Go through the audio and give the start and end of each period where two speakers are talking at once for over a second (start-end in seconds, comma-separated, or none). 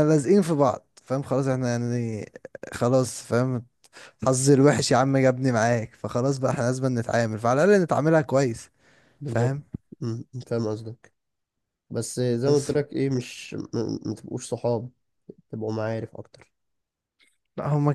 none